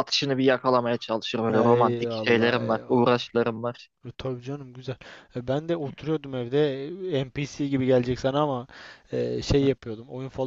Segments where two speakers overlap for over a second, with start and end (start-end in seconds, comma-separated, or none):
1.6-3.0